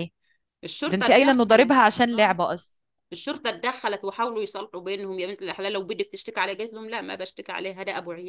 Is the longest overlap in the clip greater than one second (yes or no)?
yes